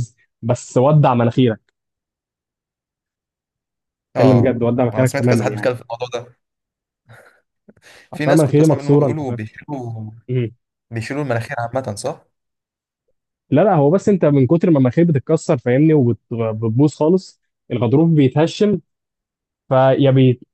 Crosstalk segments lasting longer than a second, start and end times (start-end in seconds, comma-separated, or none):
4.2-5.7, 8.1-9.4